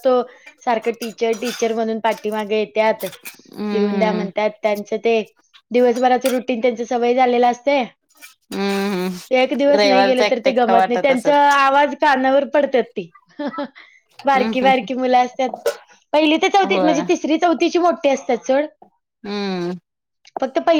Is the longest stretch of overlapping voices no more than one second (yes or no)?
no